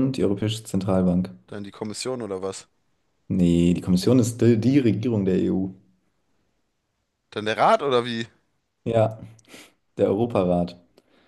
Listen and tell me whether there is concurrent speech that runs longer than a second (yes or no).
no